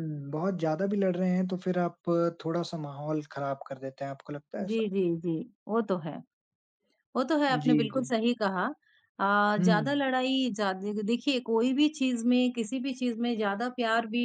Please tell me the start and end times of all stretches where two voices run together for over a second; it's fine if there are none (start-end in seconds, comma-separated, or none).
none